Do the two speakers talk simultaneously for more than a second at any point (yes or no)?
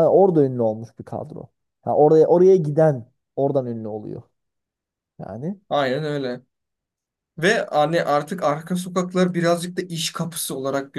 no